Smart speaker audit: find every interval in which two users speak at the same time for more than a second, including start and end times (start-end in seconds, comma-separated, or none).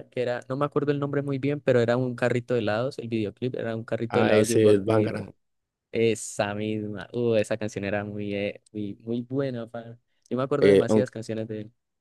4.1-5.3